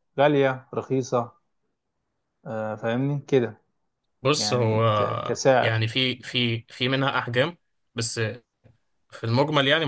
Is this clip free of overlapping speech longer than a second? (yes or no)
no